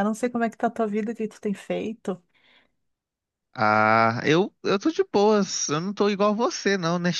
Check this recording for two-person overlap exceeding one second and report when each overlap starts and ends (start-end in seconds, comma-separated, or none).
none